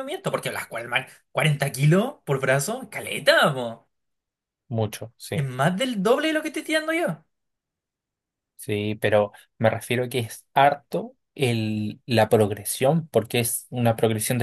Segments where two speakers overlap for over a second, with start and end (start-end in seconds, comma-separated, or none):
none